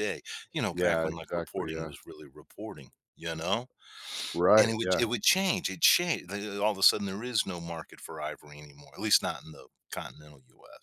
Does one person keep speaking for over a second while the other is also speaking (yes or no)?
yes